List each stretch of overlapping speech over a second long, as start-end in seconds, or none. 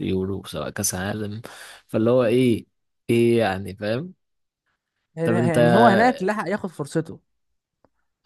none